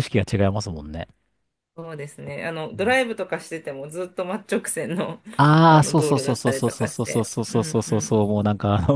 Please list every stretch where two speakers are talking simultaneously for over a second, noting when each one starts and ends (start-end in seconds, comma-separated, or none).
5.7-8.2